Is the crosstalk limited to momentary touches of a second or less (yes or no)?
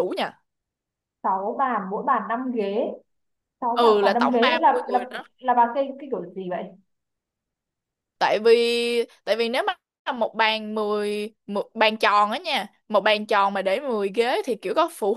no